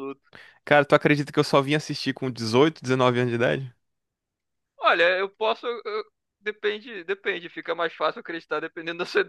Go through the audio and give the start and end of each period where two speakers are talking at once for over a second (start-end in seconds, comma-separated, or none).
none